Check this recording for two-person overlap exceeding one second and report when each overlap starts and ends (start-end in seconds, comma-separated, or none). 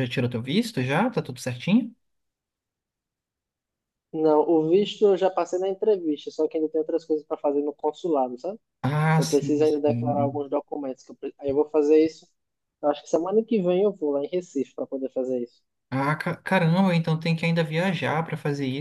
9.2-10.4